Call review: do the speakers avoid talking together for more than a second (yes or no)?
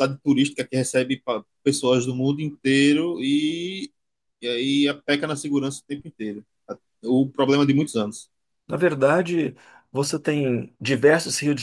yes